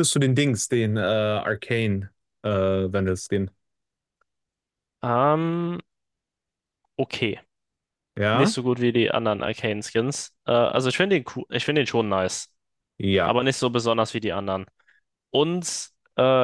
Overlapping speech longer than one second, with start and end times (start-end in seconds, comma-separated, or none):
none